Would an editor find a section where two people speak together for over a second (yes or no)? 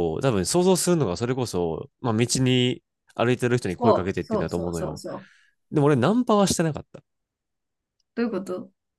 yes